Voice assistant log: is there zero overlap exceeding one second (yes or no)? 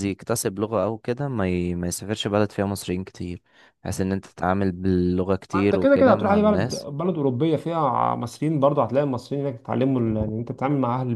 no